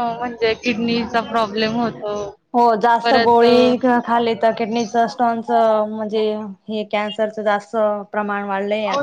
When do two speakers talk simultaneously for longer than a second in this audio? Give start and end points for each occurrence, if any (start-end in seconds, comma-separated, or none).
none